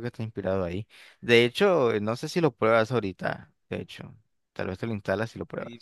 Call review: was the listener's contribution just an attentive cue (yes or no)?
no